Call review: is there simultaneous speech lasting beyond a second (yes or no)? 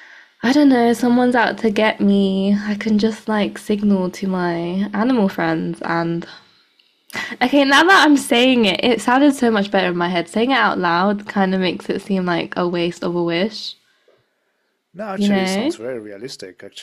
no